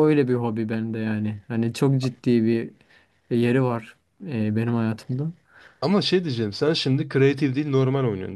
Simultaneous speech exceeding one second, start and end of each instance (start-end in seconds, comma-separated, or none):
none